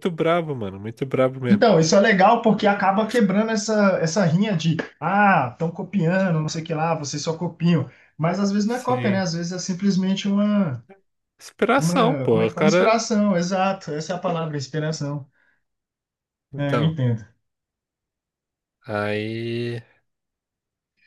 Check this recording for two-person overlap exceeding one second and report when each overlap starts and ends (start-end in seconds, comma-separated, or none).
11.8-13.0